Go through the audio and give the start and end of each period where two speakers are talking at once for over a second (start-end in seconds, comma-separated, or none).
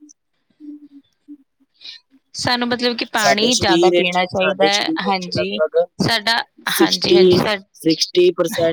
3.2-5.6